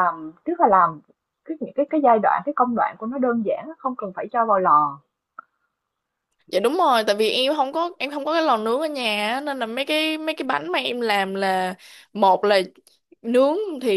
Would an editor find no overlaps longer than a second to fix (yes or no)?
yes